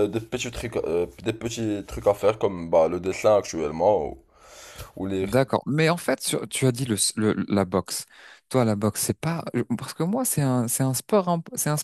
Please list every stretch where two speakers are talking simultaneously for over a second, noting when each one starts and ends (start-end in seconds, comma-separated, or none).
none